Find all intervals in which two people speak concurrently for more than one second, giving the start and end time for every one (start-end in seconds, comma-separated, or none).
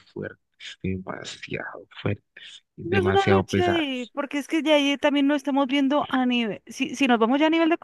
2.8-4.1